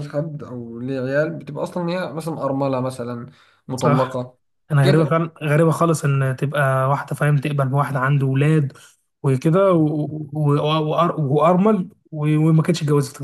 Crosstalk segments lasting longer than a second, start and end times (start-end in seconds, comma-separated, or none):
none